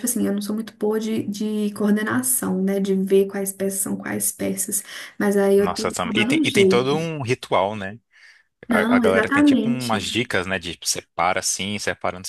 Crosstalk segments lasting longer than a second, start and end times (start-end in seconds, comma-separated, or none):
5.6-7.1, 8.7-10.1